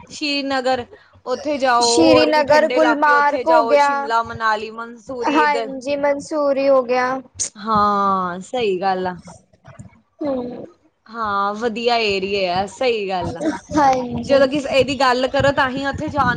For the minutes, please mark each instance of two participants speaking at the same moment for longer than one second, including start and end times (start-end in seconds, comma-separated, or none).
1.9-3.9